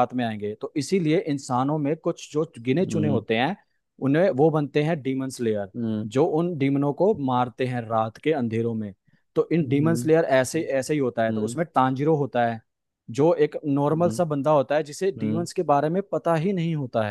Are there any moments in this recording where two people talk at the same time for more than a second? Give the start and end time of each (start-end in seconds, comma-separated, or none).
none